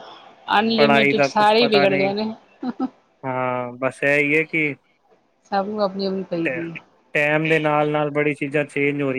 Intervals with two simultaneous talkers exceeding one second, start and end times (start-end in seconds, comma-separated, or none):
0.8-2.1